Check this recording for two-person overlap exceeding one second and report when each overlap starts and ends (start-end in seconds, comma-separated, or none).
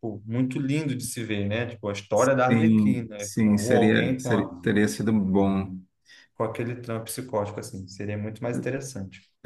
2.5-4.5